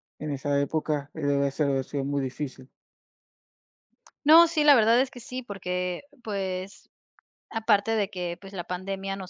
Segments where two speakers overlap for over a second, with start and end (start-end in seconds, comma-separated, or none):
none